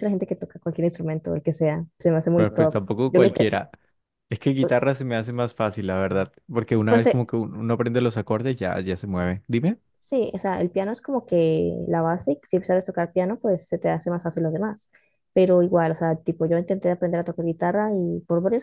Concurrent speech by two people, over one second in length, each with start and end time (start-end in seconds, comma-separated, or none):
2.4-3.6